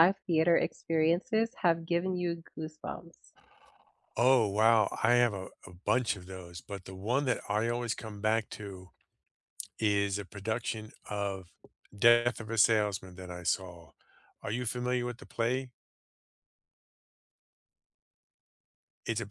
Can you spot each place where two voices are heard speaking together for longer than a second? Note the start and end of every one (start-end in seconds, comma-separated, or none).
none